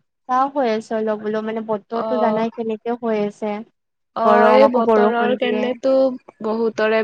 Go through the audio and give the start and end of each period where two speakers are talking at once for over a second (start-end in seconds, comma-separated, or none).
4.2-5.6